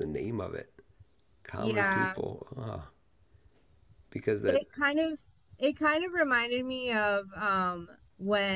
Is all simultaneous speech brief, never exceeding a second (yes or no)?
yes